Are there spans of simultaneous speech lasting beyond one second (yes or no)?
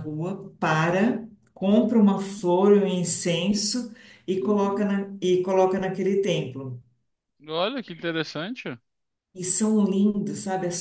no